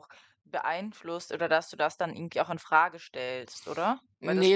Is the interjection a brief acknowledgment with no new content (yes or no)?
no